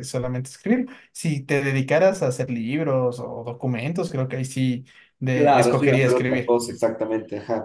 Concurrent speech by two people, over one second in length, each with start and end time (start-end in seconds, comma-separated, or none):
5.3-6.6